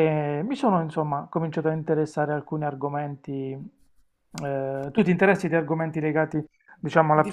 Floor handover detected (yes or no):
yes